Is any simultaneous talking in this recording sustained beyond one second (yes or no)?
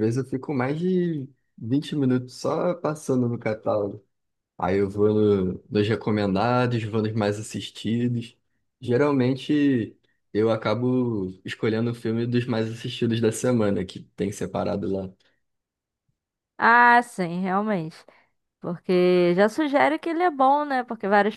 no